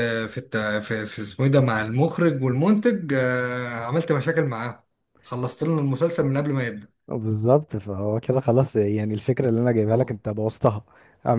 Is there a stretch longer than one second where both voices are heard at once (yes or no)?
no